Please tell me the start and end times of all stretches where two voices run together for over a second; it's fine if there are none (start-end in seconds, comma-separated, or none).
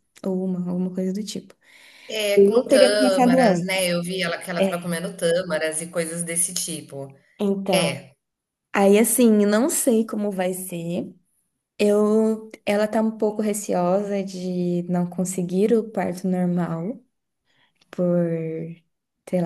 2.3-3.8